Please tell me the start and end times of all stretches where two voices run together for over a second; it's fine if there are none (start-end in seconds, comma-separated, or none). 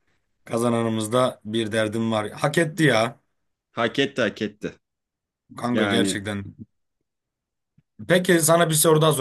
none